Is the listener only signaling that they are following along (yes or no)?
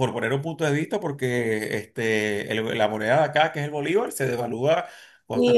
no